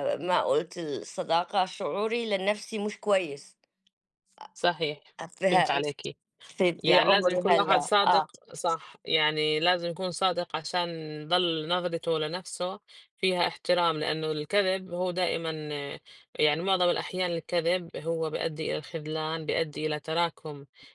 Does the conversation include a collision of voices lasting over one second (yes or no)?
yes